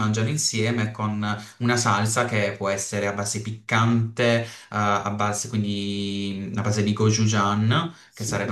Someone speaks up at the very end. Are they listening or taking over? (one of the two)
listening